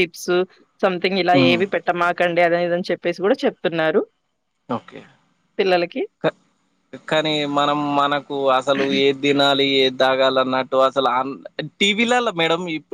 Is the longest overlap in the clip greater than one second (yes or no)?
no